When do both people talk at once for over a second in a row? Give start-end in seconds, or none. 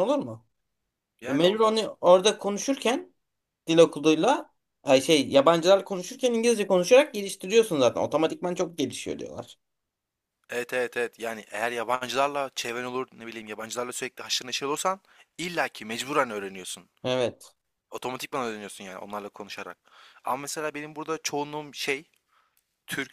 none